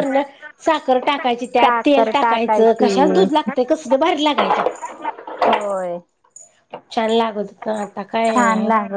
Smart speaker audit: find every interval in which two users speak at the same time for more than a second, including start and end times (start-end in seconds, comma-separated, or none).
1.6-3.1